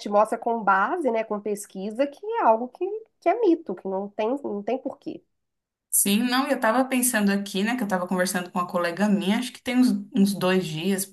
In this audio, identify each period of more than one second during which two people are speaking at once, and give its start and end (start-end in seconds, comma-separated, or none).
none